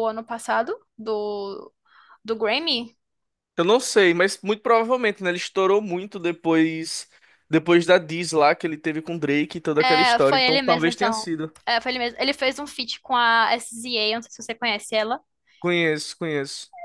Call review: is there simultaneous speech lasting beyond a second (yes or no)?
yes